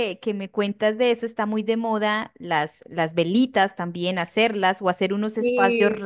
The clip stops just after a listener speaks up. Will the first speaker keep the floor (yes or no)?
yes